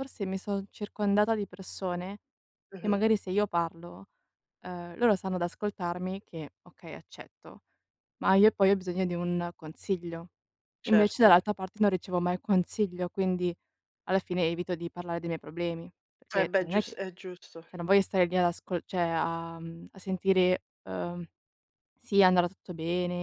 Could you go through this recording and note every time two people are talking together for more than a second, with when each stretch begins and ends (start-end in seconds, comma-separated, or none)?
none